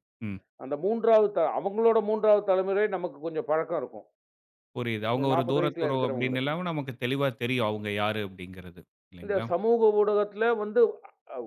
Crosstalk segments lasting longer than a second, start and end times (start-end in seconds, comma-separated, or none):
5.2-6.5